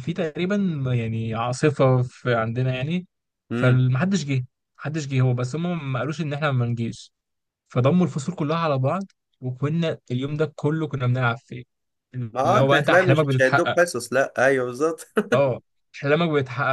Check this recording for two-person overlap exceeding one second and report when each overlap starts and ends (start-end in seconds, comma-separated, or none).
12.3-13.8